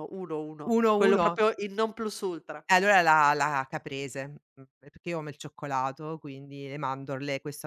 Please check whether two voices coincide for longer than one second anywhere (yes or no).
no